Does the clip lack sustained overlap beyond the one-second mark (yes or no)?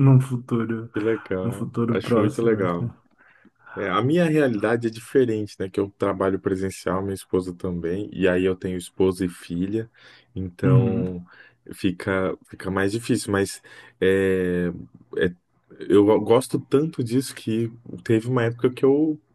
no